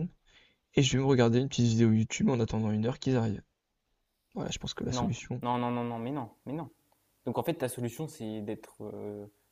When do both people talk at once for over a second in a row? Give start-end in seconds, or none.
none